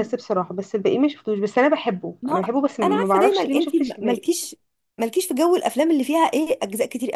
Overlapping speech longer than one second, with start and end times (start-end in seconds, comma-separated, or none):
2.2-4.3